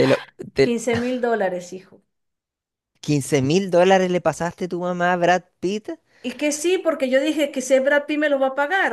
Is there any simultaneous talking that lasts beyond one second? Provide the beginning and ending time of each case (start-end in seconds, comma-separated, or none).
none